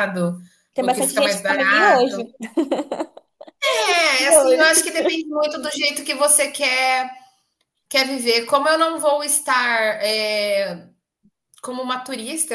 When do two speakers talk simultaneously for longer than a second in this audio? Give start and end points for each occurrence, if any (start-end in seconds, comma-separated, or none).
0.8-2.2